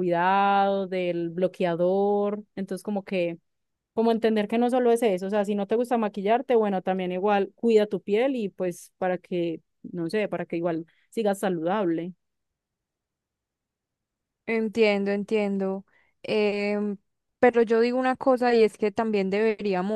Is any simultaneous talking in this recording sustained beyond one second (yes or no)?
no